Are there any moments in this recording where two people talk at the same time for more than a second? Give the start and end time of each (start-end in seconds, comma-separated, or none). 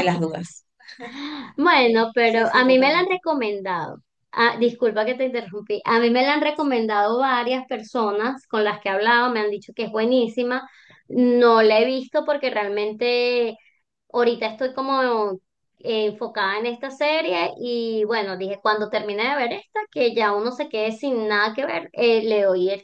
1.8-3.2